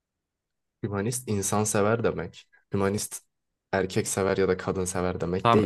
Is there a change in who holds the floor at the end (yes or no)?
yes